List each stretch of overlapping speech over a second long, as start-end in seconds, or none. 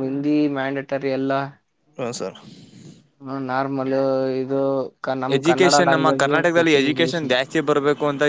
5.4-7.4